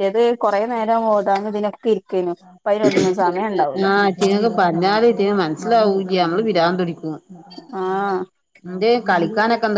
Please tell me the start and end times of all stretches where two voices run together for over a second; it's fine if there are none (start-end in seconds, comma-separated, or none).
none